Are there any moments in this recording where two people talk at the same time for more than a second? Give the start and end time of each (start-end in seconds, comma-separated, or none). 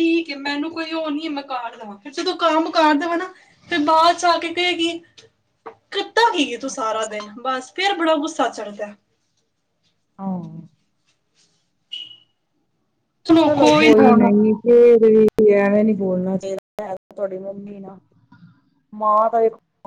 none